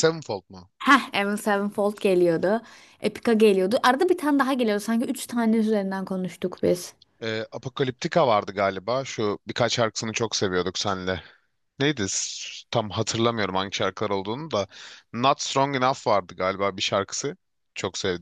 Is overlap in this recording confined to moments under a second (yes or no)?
yes